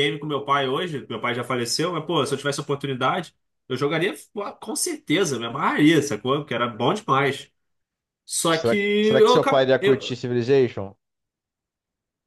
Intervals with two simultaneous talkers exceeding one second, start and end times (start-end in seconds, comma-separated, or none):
8.5-10.2